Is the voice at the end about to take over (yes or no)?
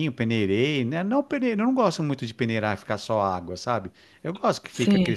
no